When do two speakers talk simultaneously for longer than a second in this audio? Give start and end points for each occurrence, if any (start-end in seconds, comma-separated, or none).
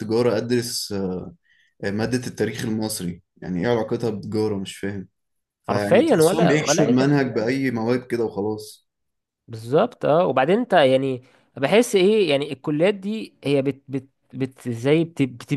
5.7-7.6